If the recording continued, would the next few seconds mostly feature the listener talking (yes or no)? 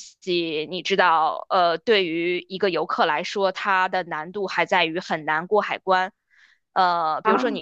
no